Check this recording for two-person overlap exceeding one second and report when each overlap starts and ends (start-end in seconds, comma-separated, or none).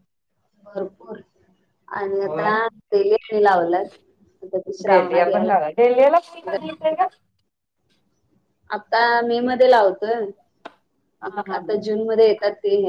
none